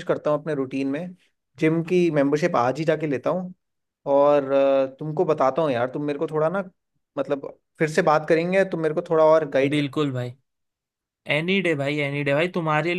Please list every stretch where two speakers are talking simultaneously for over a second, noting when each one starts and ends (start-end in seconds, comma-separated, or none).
none